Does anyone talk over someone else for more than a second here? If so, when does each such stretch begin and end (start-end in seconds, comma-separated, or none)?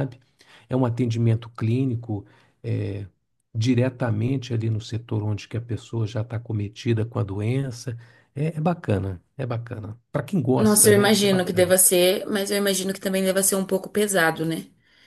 10.6-11.8